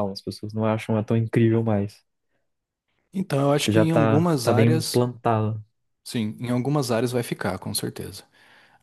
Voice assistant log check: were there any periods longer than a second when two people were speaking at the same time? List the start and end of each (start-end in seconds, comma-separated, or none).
3.6-5.0